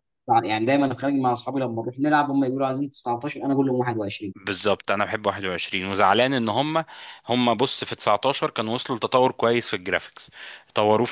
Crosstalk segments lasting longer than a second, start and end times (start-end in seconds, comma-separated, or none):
none